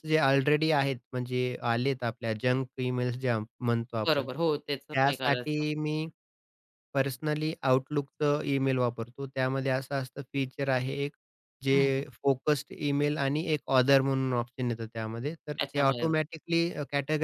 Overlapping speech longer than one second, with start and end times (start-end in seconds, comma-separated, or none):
4.1-5.6